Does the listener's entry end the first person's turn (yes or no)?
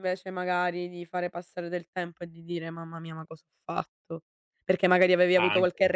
no